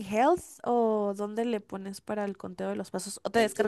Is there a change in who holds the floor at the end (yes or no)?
yes